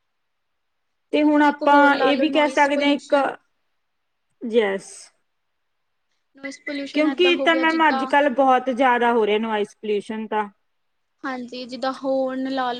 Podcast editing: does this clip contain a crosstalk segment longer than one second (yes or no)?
yes